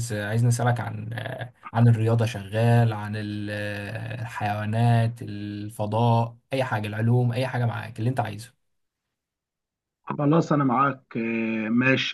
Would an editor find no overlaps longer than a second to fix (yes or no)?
yes